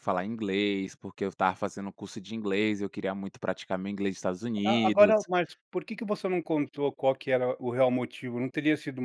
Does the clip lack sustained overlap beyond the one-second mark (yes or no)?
yes